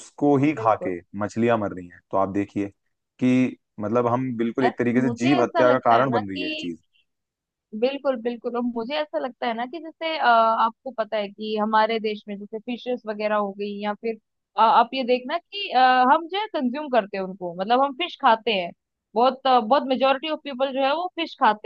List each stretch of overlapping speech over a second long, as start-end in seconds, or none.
4.6-6.4